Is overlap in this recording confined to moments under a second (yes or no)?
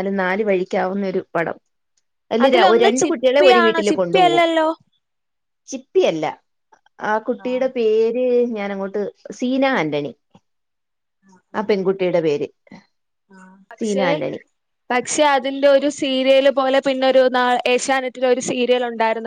no